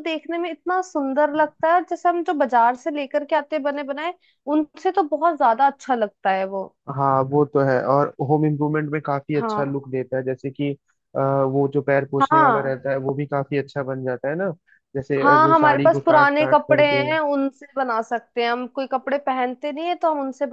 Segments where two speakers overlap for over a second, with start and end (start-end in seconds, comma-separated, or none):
15.2-17.1